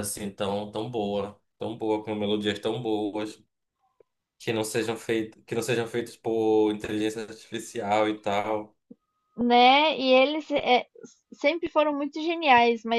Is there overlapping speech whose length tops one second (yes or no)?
no